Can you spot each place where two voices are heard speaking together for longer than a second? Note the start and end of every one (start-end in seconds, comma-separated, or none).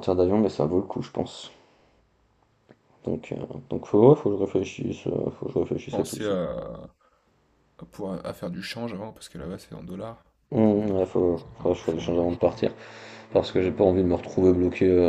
10.8-12.6